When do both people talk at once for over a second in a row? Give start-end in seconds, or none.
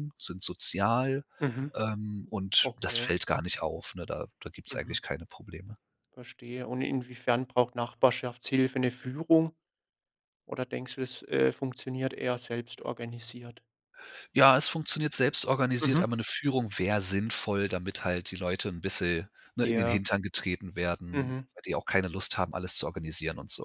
none